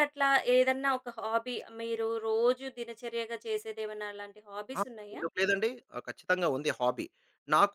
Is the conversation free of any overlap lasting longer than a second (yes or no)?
yes